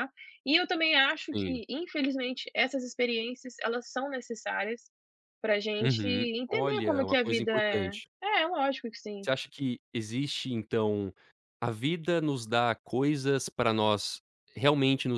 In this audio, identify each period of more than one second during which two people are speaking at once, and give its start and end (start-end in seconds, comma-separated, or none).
5.8-8.1